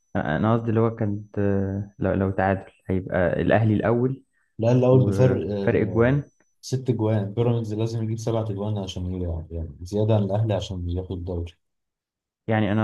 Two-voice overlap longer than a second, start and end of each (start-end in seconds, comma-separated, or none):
4.8-6.2